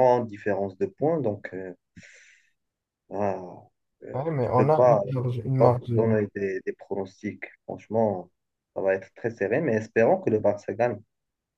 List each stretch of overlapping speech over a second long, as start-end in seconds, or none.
4.1-5.9